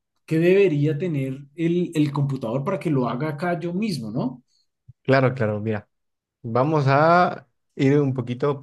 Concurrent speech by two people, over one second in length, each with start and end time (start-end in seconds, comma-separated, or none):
none